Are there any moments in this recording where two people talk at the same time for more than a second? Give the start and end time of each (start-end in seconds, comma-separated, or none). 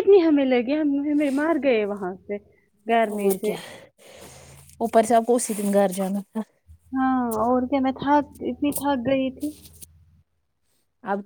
none